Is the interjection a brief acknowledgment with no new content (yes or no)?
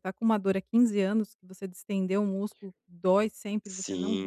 no